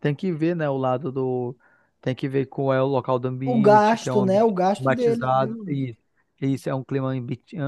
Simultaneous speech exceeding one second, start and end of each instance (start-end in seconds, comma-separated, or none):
3.4-5.9